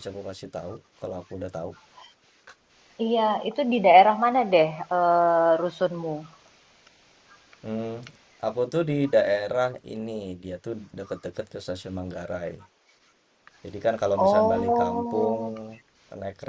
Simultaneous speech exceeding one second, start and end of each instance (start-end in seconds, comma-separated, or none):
14.2-15.4